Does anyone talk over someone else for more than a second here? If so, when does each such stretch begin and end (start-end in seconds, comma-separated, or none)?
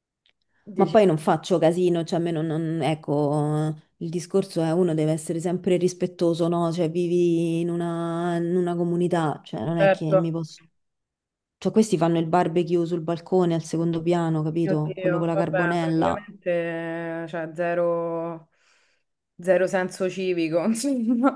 14.6-16.2